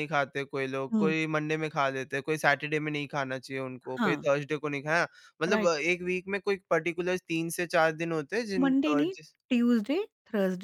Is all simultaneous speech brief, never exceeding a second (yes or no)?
yes